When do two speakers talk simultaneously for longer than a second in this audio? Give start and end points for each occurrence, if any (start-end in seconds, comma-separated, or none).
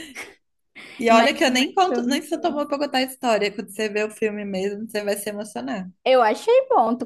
1.1-2.6